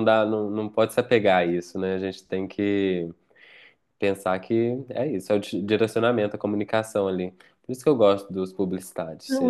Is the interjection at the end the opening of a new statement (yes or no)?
yes